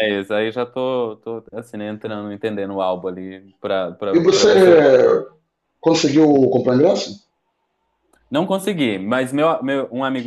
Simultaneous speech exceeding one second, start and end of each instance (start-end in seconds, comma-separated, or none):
none